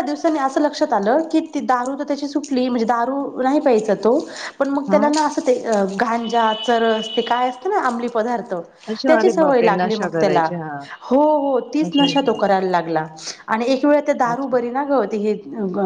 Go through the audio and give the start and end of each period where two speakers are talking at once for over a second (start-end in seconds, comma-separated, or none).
9.1-10.5